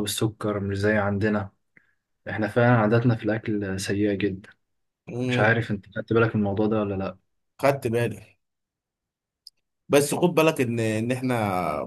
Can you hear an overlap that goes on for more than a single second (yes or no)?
no